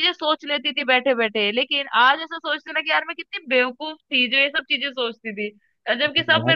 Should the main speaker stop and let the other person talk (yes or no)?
no